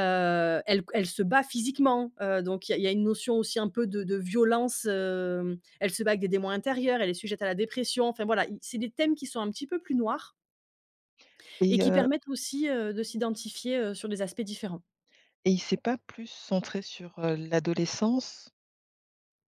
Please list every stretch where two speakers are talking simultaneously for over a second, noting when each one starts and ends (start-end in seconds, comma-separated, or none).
none